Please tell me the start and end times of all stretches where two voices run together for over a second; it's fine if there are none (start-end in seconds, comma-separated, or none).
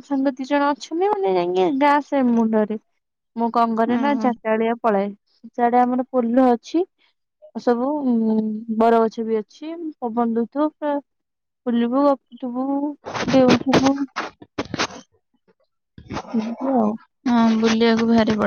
none